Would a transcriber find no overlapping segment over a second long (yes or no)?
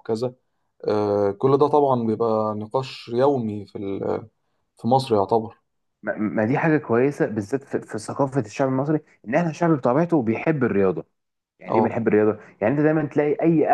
yes